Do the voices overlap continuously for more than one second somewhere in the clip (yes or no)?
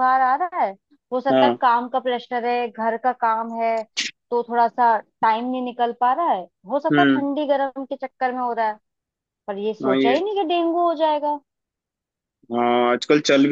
no